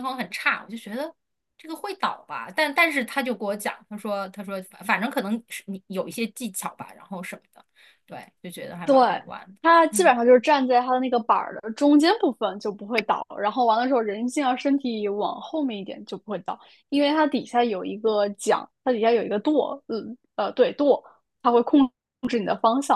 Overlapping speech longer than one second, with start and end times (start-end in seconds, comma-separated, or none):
none